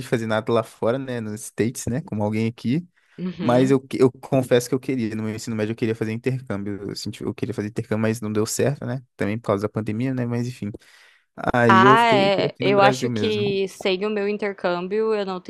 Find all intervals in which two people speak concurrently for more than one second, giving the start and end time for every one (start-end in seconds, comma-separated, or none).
11.7-13.4